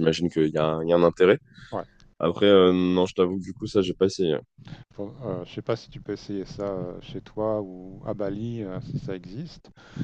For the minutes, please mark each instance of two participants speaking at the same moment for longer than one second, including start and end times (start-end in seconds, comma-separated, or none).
none